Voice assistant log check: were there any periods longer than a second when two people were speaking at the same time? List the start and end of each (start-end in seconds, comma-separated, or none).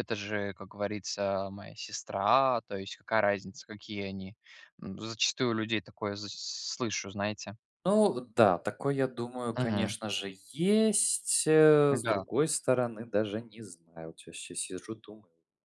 none